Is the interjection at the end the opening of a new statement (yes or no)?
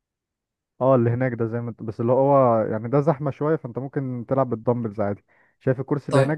no